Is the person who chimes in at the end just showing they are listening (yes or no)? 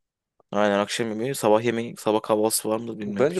no